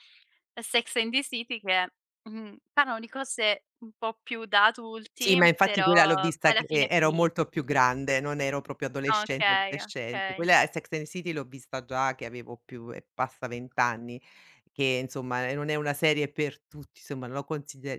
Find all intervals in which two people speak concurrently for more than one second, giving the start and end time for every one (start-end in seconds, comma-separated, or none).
5.2-7.6, 9.1-10.5